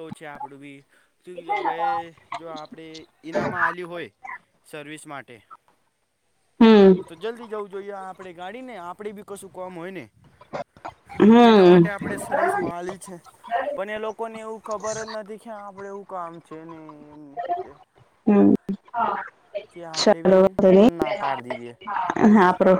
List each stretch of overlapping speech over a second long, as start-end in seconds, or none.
none